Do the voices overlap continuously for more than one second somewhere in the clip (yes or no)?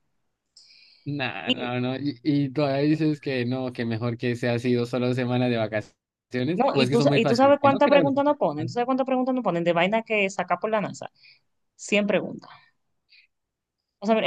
yes